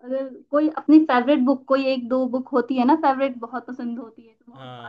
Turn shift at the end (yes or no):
yes